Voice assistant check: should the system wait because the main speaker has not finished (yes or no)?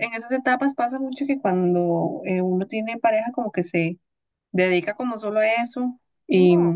yes